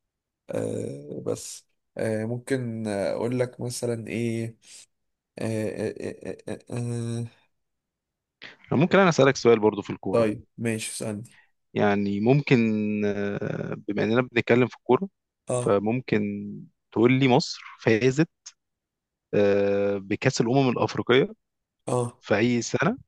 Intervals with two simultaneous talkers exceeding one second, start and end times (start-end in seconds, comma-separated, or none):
none